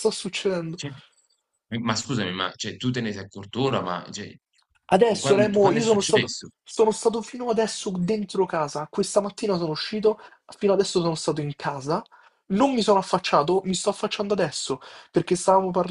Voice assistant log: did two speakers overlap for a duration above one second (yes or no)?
yes